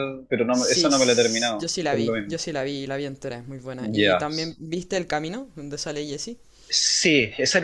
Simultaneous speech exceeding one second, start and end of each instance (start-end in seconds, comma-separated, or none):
0.5-2.4